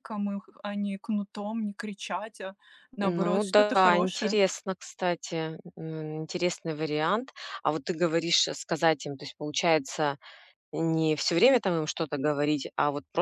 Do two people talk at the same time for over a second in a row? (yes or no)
yes